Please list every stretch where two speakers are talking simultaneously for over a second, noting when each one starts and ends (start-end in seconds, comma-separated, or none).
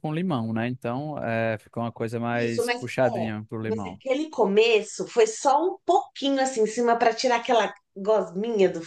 2.3-4.0